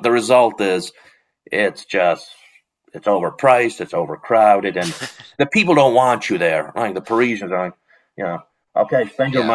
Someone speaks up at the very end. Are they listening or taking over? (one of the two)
listening